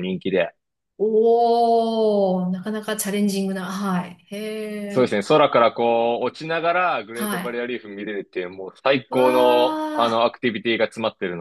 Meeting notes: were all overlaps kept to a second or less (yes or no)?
yes